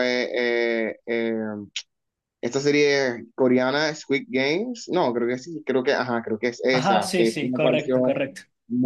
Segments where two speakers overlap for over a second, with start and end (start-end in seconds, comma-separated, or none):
6.7-8.2